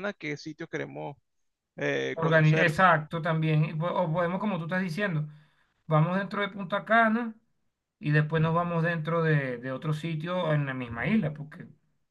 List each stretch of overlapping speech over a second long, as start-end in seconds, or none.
none